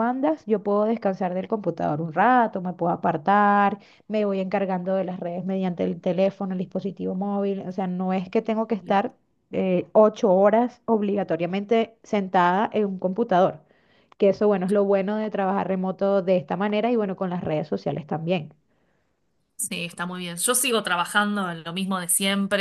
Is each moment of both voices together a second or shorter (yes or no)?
yes